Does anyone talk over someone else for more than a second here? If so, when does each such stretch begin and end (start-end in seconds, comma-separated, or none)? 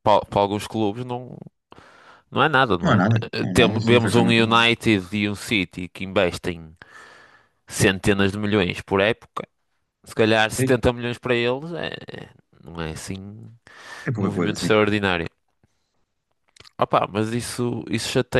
2.8-4.7